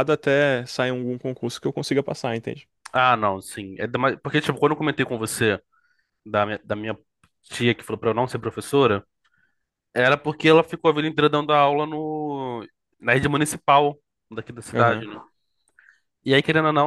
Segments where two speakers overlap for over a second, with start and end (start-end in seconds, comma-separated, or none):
none